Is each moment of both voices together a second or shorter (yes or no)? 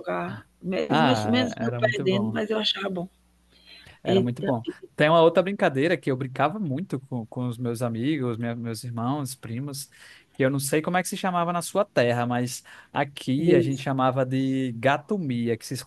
no